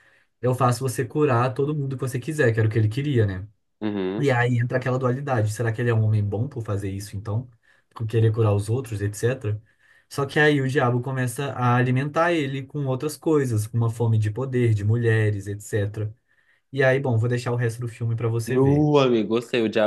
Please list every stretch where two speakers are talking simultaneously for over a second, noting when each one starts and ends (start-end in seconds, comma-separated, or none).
none